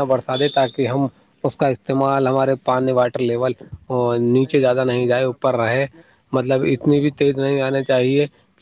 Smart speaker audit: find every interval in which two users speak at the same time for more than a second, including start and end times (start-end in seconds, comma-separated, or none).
4.4-5.8